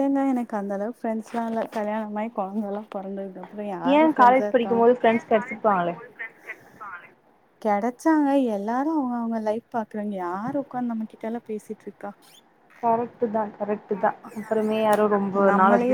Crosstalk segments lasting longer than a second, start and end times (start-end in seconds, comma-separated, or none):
3.9-5.9